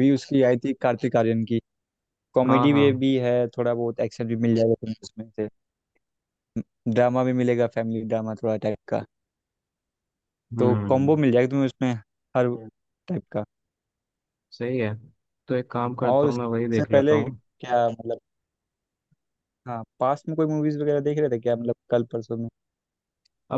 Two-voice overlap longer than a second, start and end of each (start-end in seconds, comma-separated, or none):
16.0-17.4